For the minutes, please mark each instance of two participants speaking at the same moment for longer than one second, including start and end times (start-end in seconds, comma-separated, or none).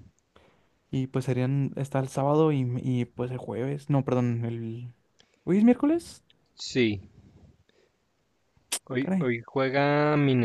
none